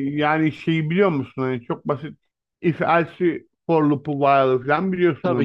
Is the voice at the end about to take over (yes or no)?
yes